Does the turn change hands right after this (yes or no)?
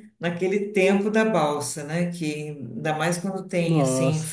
yes